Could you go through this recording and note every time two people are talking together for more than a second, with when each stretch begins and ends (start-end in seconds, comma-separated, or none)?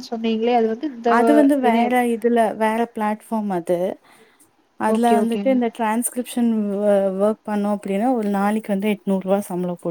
none